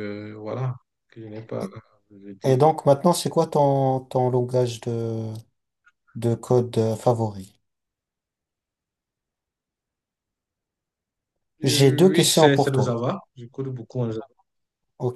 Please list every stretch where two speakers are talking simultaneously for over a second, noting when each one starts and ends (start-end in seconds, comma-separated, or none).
11.6-13.0